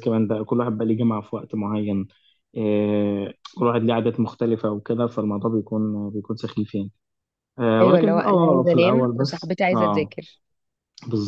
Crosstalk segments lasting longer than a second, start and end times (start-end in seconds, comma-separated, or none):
7.8-10.1